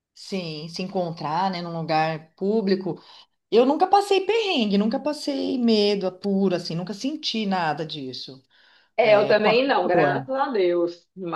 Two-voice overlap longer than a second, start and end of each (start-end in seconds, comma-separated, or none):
9.0-10.3